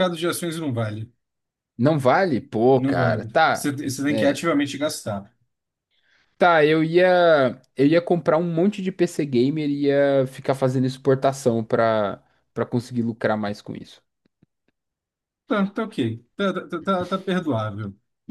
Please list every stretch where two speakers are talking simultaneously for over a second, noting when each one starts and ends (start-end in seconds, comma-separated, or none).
2.8-4.4